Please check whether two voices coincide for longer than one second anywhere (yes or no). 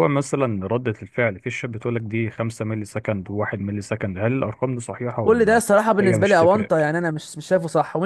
yes